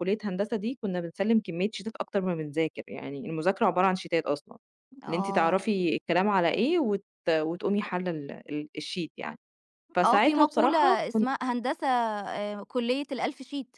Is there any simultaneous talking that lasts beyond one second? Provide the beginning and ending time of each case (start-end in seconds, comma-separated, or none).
10.0-11.3